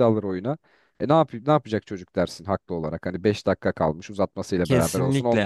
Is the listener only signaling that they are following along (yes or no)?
no